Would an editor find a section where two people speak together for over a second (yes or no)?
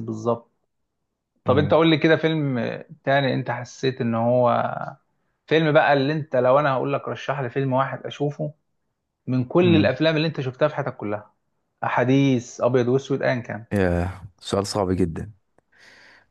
no